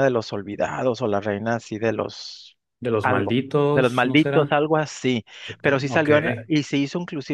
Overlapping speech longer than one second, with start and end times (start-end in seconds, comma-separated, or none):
3.0-4.6